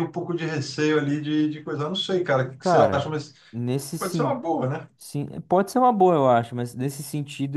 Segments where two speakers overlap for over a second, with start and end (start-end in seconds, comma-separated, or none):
none